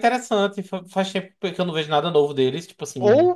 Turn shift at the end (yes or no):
yes